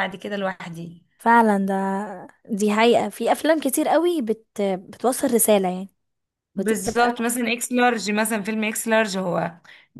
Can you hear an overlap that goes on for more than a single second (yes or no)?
no